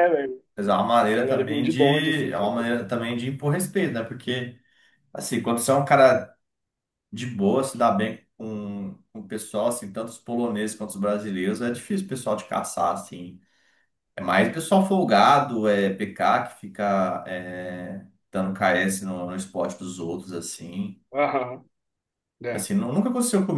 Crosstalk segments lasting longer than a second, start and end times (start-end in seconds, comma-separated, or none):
1.1-2.5